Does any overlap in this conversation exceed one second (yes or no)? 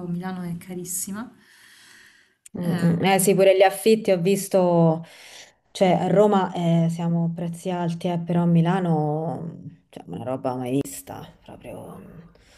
no